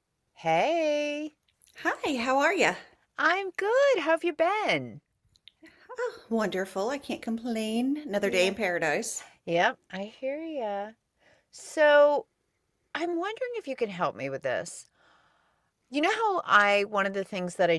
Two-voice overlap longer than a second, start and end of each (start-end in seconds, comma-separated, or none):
none